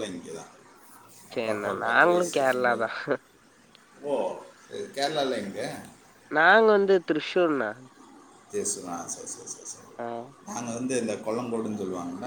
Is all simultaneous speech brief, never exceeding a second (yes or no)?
no